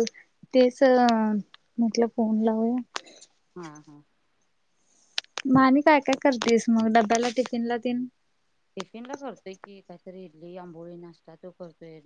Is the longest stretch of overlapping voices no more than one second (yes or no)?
yes